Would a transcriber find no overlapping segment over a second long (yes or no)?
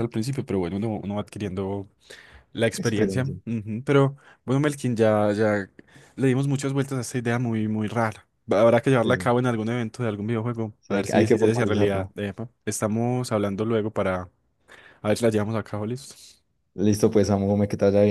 no